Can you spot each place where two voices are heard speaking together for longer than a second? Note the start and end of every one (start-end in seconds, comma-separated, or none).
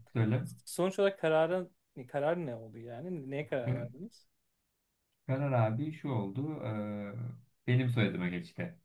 none